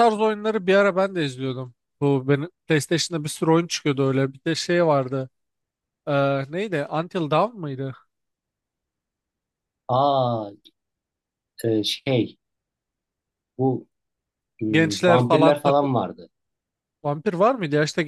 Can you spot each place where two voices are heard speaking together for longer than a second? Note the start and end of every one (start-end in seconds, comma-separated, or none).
14.7-15.9